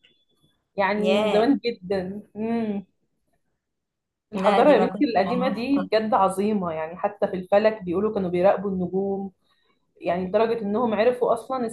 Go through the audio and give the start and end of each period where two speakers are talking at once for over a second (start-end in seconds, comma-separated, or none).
4.3-5.9